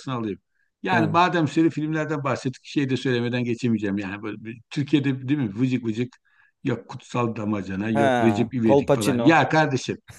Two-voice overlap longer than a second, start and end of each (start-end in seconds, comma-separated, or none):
7.9-9.4